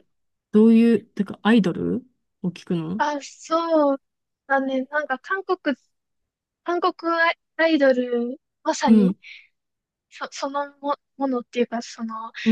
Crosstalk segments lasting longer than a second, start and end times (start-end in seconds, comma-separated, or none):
none